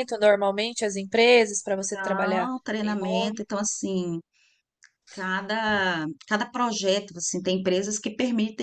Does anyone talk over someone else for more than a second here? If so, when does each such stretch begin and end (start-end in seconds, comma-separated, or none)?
1.9-3.4